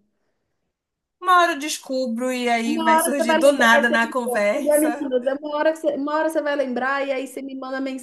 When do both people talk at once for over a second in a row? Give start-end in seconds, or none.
2.6-5.1